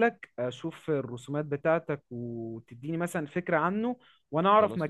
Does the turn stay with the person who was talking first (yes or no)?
yes